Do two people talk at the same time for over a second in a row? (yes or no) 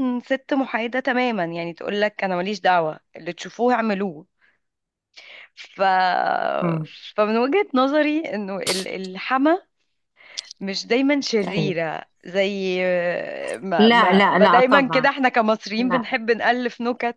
yes